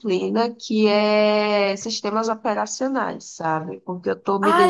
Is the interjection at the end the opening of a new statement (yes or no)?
yes